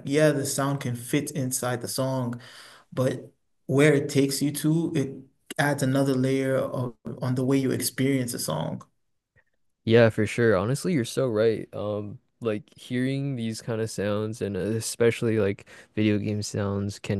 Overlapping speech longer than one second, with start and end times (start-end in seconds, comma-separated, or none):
none